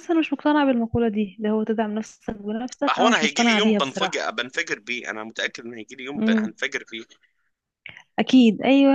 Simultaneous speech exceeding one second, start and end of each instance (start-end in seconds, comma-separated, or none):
2.9-4.3